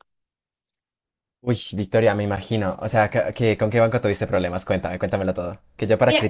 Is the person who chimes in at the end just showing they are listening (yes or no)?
yes